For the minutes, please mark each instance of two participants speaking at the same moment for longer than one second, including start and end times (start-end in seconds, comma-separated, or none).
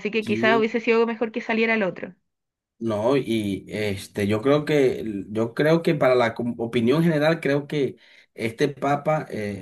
none